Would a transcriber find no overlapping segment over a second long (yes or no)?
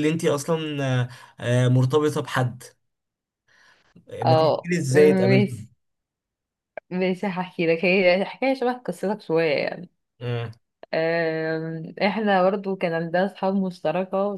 no